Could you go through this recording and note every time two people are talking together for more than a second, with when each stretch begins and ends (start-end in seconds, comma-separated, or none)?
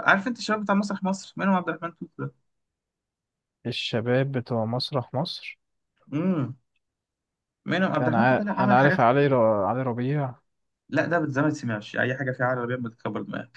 8.0-9.4